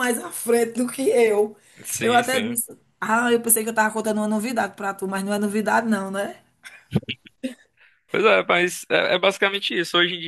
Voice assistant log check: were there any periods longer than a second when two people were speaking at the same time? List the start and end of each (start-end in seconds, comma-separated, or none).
none